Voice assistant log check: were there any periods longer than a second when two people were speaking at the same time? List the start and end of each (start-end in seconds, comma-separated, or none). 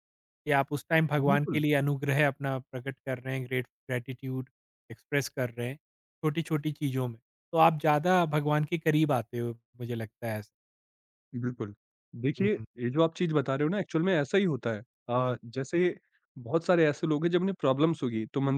none